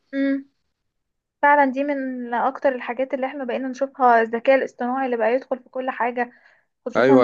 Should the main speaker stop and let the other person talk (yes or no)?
yes